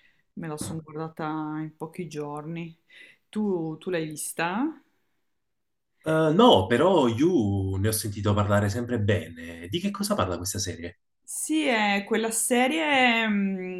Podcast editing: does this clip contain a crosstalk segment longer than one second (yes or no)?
no